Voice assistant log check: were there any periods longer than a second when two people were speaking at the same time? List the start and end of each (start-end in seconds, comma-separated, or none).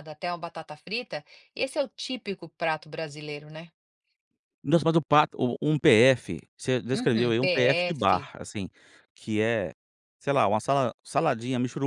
6.9-8.3